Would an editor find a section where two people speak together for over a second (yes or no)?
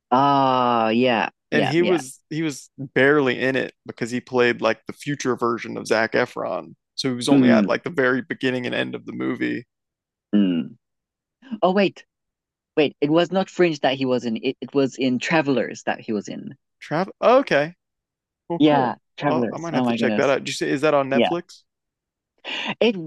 yes